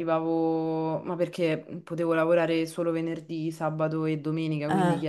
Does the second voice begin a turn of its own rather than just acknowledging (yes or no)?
no